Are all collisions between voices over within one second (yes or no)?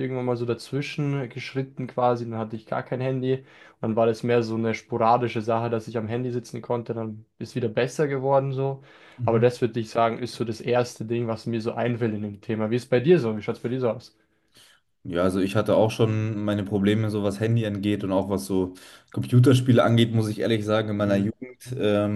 yes